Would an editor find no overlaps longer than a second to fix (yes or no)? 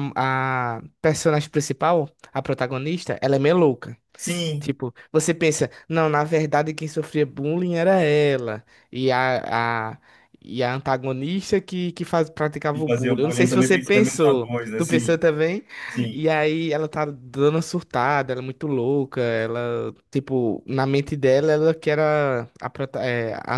no